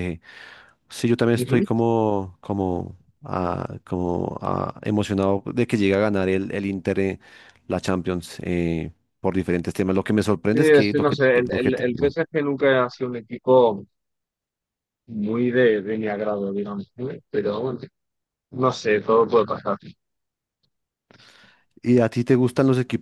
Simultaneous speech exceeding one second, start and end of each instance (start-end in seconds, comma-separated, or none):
10.5-12.2